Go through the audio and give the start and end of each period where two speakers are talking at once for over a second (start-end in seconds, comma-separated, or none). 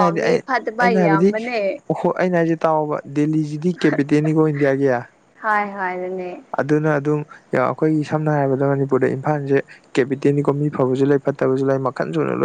none